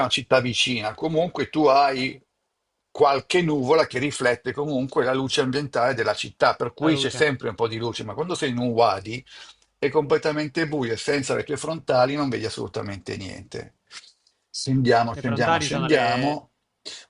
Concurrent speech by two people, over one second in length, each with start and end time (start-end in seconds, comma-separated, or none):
15.1-16.4